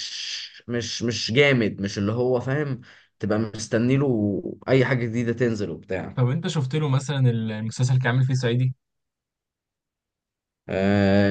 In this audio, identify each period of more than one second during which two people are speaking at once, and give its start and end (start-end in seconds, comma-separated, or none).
none